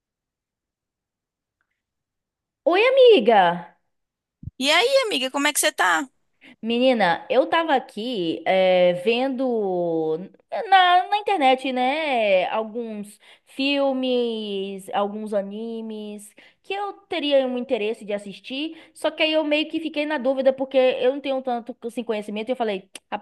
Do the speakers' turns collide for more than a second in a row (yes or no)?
no